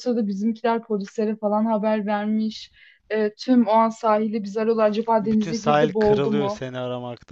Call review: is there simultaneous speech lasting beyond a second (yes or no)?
yes